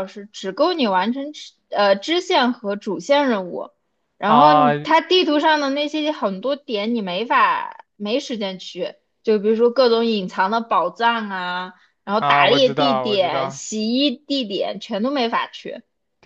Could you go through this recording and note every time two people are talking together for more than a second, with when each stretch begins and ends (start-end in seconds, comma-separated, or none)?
12.2-13.6